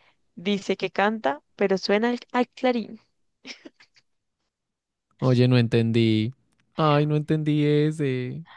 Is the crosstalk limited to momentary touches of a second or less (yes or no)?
yes